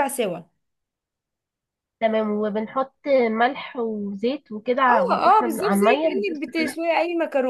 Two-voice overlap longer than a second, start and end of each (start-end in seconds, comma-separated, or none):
4.9-6.7